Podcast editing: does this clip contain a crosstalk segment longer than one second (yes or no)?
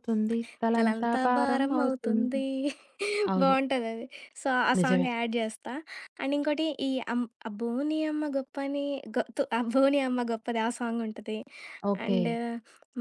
yes